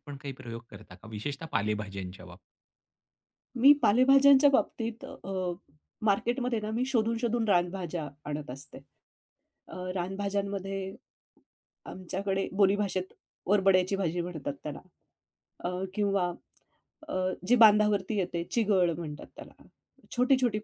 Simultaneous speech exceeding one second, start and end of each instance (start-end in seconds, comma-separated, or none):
none